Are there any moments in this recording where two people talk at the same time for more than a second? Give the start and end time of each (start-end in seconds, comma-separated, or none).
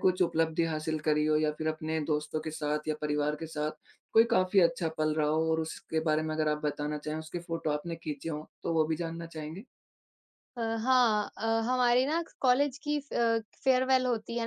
none